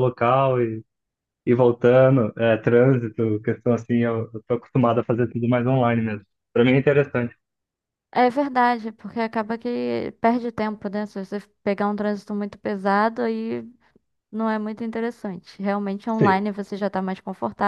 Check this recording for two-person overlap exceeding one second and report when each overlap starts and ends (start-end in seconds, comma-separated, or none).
none